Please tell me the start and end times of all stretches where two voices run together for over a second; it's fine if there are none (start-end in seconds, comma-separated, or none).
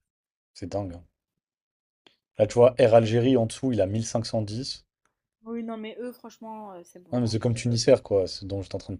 none